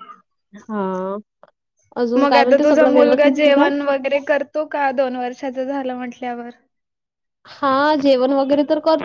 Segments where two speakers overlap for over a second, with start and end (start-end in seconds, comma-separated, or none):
none